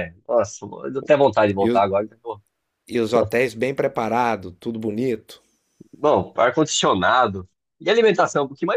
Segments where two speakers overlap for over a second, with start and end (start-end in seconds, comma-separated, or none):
none